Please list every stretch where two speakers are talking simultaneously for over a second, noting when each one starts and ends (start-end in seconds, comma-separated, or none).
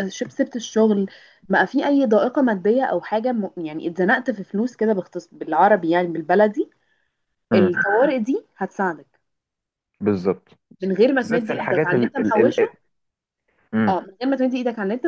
11.2-12.7